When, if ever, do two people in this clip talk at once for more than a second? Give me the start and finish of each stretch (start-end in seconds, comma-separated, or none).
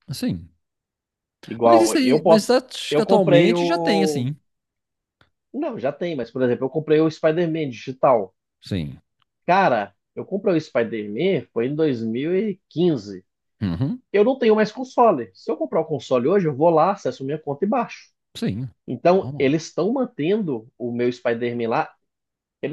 1.6-4.3